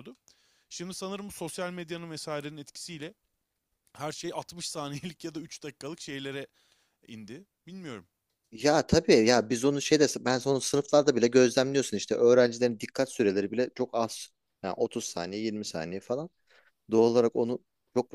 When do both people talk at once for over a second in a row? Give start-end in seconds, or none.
none